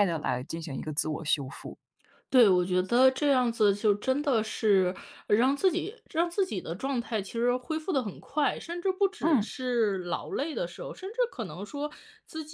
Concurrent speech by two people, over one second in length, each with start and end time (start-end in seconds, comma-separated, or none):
none